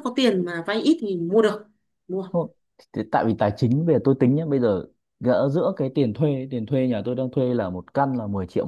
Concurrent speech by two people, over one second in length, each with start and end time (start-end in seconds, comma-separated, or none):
none